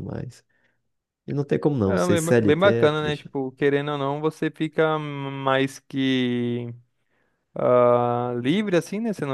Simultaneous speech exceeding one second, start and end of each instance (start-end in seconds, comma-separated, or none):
1.8-3.3